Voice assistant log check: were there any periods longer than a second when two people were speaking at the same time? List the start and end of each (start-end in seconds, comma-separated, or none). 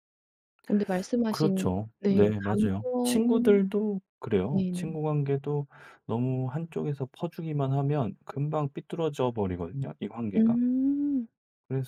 1.3-3.6